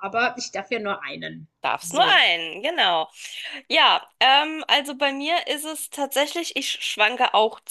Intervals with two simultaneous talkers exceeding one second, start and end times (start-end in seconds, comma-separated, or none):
none